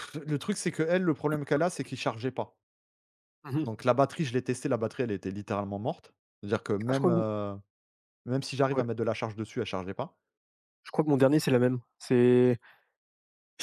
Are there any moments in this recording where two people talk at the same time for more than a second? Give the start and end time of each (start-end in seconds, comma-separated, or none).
none